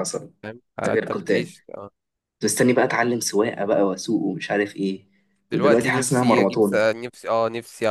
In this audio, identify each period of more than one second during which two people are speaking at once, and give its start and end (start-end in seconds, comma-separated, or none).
5.5-6.9